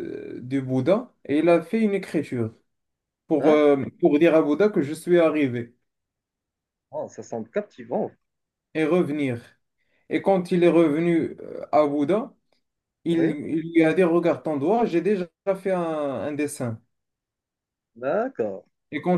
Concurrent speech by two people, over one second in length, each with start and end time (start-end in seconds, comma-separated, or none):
none